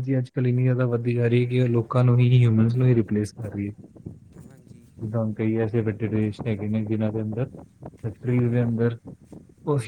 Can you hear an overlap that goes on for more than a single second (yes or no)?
yes